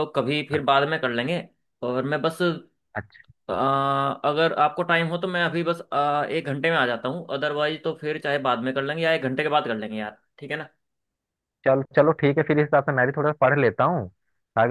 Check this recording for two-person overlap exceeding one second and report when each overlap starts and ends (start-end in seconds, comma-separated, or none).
none